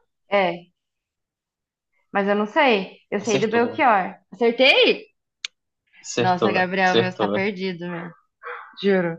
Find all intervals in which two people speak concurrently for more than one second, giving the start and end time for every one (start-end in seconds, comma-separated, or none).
6.2-7.5